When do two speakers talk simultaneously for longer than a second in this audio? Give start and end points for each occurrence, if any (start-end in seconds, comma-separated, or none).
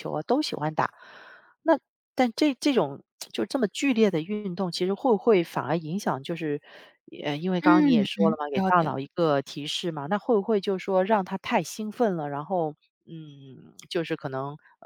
7.6-9.3